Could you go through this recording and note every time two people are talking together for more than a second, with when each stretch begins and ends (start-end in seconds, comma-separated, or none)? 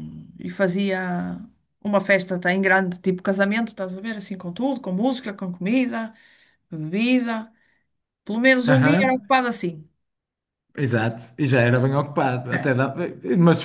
none